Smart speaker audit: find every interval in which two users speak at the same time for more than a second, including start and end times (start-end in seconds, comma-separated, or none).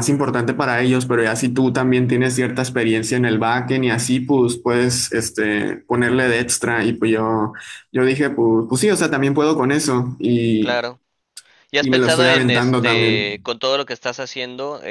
11.8-13.4